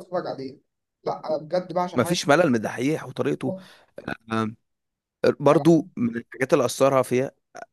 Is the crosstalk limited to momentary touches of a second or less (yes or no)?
yes